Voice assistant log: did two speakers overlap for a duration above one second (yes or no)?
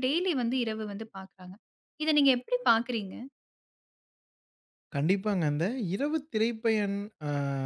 no